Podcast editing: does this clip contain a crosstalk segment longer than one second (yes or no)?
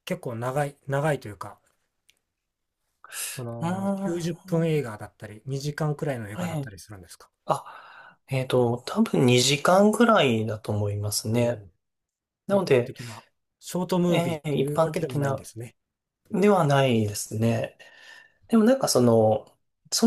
yes